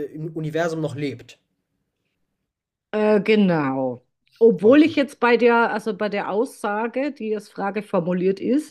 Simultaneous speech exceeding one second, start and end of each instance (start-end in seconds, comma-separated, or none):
none